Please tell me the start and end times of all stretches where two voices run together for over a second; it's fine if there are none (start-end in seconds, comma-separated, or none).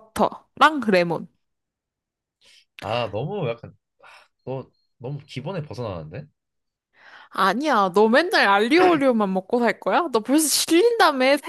none